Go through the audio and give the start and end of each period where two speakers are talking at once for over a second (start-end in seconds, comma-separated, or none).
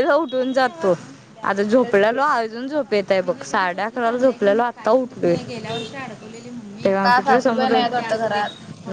none